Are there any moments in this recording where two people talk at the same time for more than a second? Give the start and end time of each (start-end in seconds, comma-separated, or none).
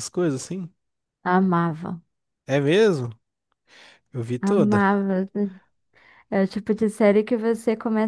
none